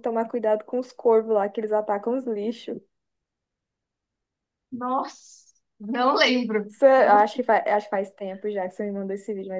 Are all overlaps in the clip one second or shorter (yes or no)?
yes